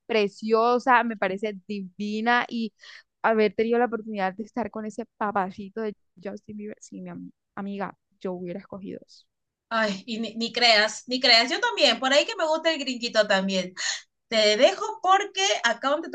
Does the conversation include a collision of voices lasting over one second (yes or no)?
no